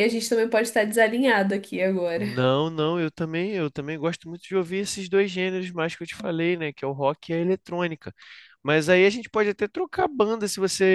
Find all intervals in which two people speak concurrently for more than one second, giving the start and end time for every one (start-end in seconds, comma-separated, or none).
none